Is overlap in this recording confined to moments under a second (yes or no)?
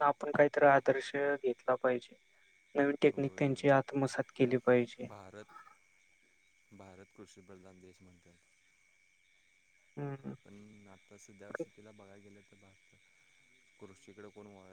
yes